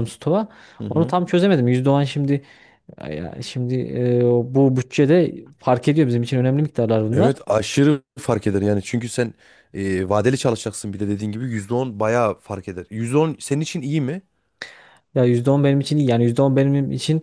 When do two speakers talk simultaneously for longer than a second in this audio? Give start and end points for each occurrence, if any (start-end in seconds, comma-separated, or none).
none